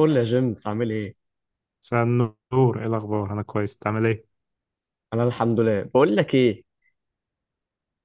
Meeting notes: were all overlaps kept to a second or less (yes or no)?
yes